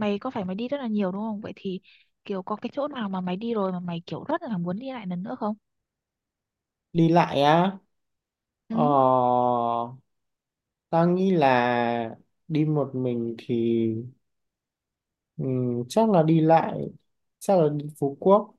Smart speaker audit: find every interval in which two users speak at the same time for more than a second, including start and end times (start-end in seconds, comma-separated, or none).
none